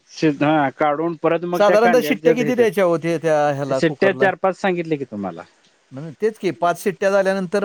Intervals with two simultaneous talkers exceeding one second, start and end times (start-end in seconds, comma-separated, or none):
1.6-4.3